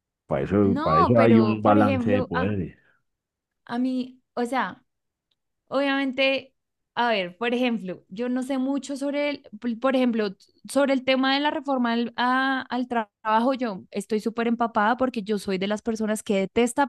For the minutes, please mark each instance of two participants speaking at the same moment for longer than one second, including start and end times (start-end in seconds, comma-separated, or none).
0.6-2.5